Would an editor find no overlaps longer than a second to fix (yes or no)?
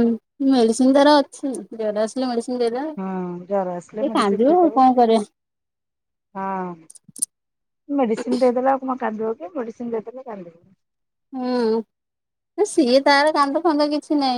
no